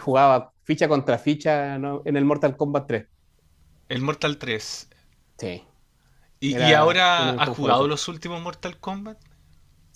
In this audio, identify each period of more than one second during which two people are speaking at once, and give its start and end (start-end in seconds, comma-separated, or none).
6.5-7.9